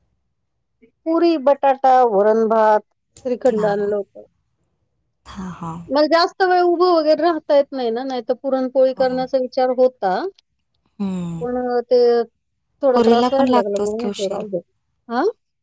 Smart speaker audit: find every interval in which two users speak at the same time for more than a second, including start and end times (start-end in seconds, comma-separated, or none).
12.9-14.4